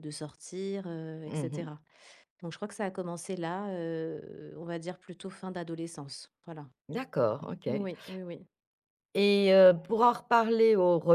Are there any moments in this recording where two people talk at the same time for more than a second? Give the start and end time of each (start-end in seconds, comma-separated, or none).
none